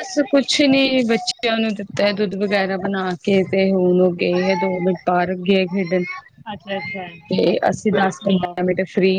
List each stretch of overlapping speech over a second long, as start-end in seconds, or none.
6.5-8.6